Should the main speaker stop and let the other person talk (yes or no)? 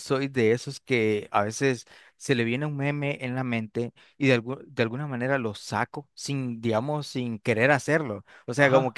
no